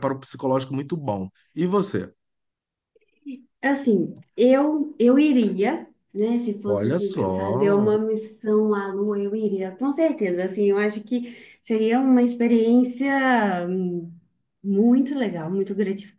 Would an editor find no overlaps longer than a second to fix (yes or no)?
no